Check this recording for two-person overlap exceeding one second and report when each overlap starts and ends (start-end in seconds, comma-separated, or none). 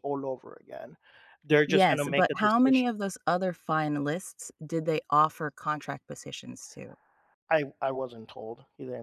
1.7-2.9